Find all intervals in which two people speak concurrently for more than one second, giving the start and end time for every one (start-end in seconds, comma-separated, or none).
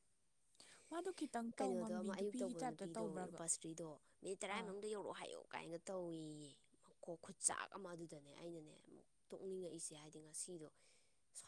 1.6-3.4